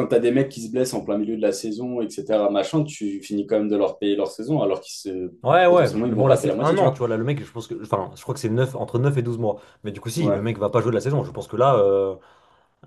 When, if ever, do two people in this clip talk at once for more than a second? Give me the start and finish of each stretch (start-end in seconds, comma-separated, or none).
5.4-7.0